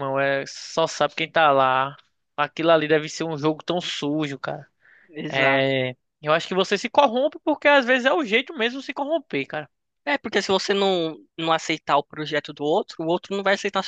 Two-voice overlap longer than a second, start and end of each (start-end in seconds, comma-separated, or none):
none